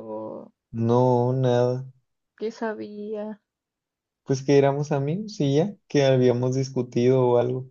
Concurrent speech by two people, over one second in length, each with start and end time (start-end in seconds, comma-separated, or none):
none